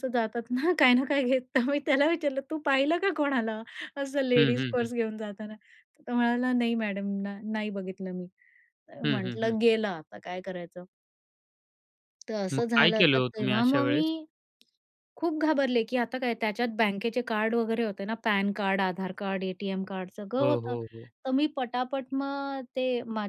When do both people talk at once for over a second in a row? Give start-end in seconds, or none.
12.5-14.1